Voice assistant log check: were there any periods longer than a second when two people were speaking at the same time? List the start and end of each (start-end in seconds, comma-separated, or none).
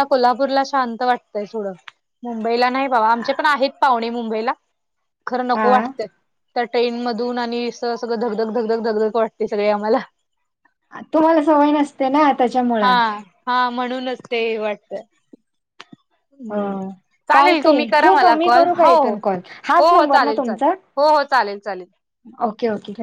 17.3-20.7